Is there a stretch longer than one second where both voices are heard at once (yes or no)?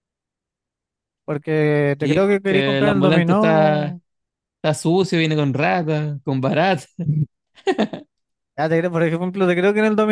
yes